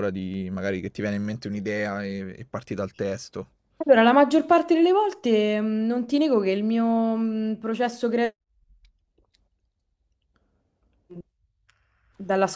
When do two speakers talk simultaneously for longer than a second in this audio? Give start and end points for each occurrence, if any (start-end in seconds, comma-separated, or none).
none